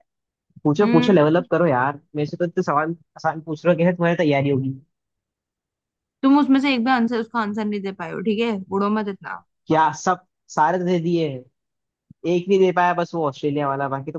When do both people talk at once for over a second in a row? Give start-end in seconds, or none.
none